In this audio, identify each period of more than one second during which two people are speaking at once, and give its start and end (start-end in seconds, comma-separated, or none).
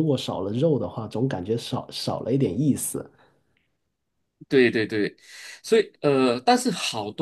none